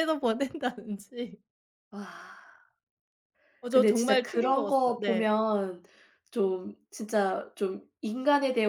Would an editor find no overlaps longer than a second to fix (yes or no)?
no